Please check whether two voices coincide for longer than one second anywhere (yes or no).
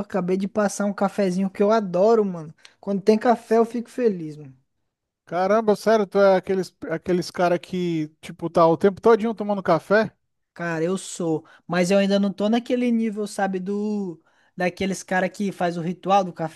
no